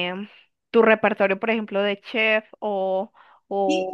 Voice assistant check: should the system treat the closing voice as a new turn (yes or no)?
yes